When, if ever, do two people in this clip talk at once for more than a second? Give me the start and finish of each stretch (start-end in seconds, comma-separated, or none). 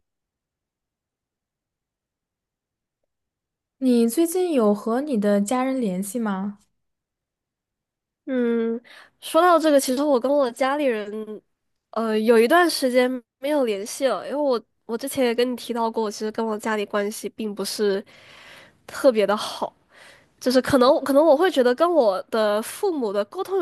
none